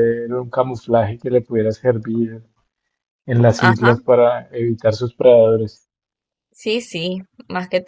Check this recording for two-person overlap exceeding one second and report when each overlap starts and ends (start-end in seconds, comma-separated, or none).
none